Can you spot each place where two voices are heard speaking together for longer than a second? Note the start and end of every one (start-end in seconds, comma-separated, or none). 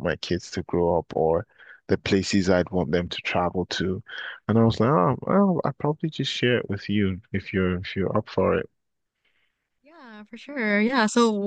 none